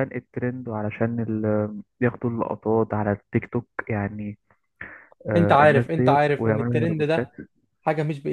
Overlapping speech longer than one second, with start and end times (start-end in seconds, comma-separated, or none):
5.3-7.3